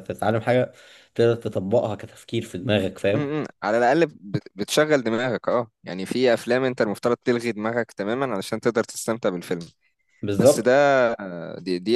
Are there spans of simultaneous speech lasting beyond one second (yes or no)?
no